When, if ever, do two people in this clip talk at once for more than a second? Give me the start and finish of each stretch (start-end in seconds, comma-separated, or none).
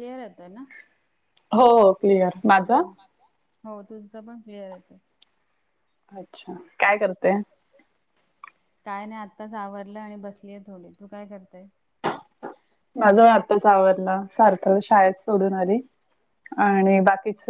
none